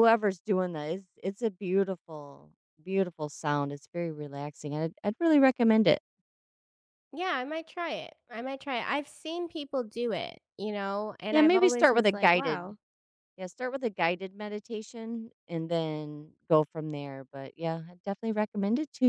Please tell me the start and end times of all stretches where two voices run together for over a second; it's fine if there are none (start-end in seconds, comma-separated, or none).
11.3-12.8